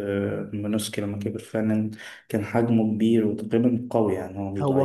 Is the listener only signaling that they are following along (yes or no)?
no